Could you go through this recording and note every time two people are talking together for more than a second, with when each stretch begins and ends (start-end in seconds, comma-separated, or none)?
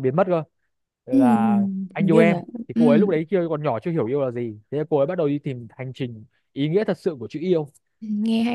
1.1-3.1